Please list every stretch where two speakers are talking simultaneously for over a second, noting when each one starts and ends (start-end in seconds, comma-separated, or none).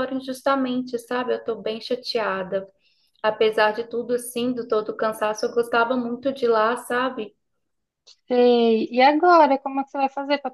none